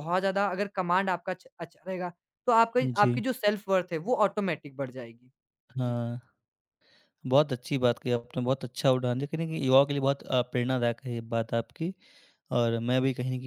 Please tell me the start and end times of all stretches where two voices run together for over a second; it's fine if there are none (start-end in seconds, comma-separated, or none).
none